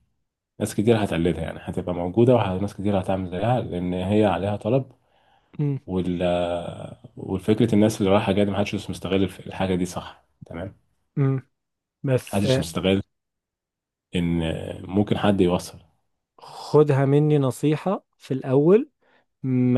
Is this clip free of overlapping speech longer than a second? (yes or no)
yes